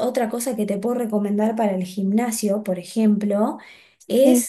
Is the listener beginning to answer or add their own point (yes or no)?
no